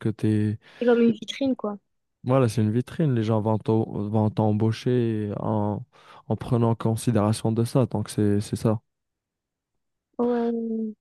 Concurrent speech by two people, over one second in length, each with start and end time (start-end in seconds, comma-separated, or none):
none